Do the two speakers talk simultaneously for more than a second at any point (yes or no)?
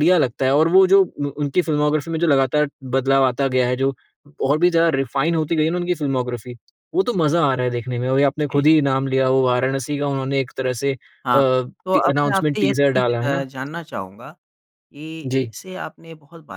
yes